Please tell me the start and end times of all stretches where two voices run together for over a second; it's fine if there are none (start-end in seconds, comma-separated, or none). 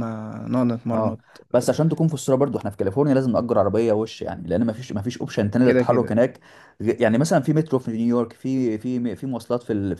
none